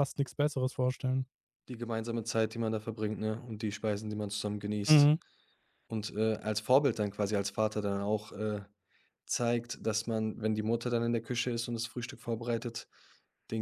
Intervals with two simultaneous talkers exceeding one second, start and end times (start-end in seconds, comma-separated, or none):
none